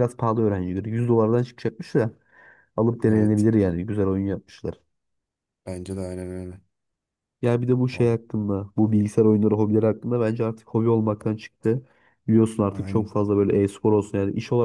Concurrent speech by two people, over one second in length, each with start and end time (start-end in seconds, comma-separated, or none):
none